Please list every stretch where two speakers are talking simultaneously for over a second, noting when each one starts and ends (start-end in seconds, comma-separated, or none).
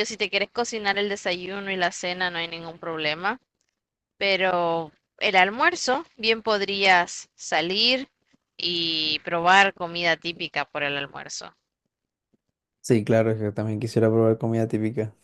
none